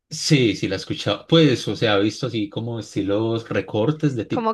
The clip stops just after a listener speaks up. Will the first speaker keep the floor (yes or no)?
no